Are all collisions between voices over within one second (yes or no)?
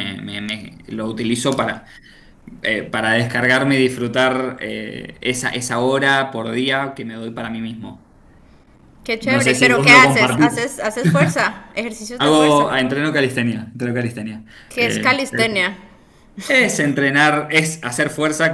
no